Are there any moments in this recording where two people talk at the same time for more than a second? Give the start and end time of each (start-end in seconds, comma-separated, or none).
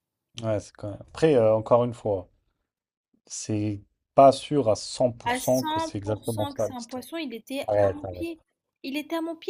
5.3-7.0